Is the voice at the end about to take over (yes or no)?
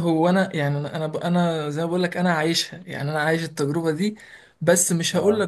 no